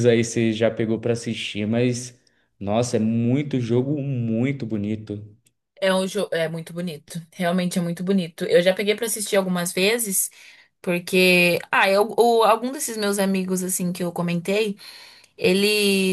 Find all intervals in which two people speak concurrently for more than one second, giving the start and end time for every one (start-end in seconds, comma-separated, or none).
none